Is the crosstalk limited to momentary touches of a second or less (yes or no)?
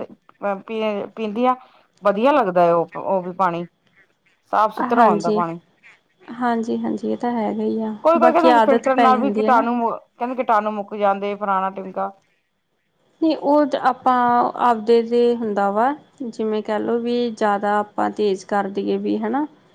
no